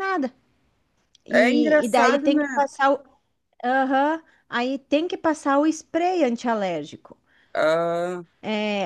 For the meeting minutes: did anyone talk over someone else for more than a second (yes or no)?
yes